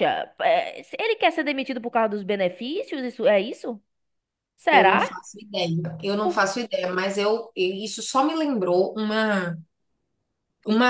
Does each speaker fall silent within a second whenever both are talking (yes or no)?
yes